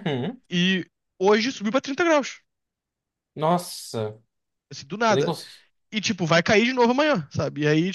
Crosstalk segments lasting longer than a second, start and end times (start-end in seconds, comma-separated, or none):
none